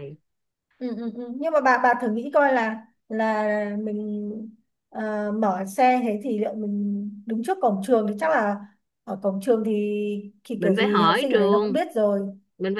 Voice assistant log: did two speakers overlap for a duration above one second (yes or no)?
yes